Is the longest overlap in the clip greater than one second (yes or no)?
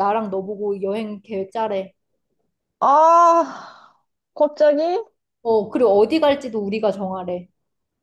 no